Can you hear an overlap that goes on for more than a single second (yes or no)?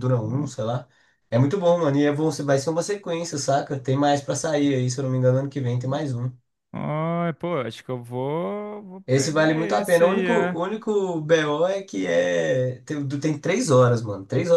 yes